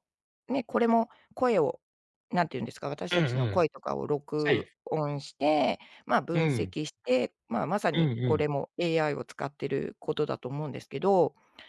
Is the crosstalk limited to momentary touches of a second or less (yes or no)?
yes